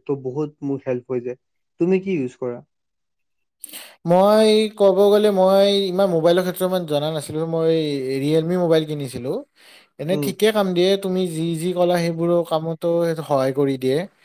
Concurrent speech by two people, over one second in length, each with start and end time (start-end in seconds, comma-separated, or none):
none